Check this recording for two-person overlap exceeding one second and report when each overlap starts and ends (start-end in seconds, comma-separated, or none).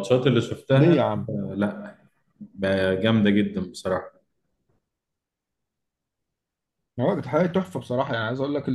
none